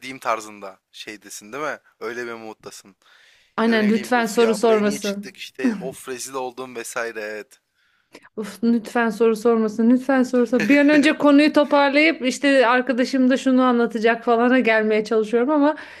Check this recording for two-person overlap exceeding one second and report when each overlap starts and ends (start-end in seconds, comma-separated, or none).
3.7-5.3